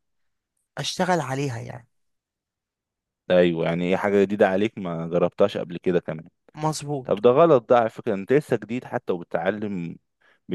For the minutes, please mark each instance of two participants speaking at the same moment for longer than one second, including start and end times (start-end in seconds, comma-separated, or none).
none